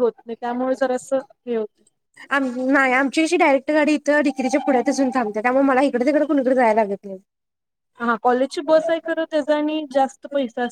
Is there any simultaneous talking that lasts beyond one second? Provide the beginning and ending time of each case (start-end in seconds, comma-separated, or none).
none